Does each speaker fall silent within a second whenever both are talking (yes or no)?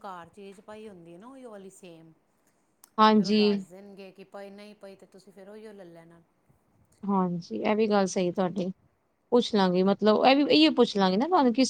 yes